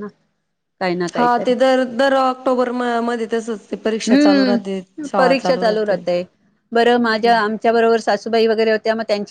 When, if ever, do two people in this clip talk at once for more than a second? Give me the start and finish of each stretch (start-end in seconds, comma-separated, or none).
4.1-6.0